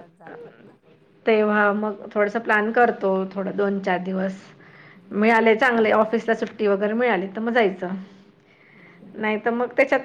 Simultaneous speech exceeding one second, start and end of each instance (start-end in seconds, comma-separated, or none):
none